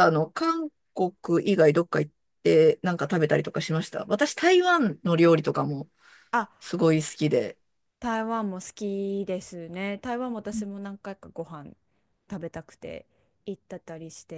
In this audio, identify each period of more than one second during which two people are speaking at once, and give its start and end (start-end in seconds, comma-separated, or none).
none